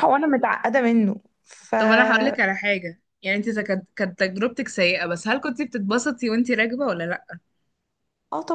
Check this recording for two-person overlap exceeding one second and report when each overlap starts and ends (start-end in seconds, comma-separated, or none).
none